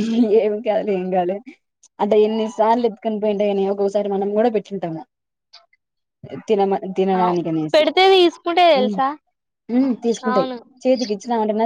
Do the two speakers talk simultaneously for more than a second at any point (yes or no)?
no